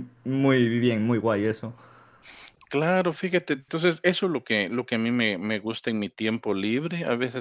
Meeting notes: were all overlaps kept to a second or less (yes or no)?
yes